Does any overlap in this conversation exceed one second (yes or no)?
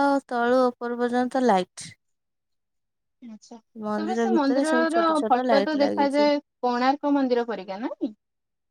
yes